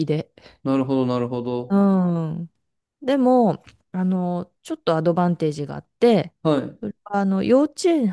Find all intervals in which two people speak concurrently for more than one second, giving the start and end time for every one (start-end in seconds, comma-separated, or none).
none